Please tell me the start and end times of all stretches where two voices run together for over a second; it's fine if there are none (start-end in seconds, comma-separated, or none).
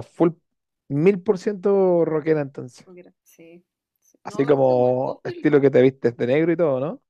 4.2-5.7